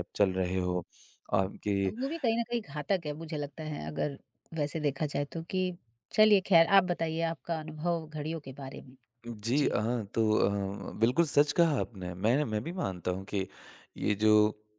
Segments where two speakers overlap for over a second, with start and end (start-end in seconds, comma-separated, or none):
none